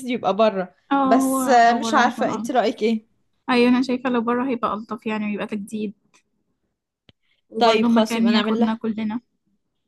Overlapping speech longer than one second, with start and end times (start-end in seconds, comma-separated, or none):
0.9-2.6, 7.6-8.8